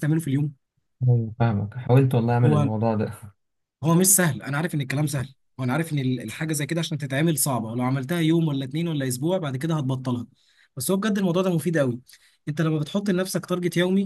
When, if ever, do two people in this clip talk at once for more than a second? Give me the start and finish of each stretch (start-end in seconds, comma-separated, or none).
none